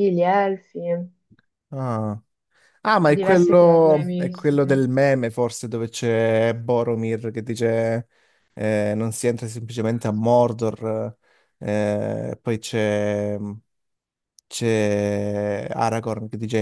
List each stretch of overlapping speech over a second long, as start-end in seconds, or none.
3.2-4.7